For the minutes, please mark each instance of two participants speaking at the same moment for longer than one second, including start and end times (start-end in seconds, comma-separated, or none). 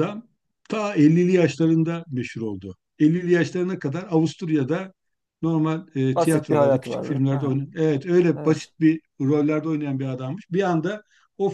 6.2-7.6